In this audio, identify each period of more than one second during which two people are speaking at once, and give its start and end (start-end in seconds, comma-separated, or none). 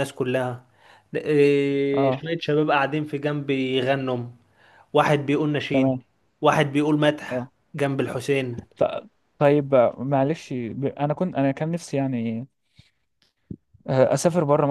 none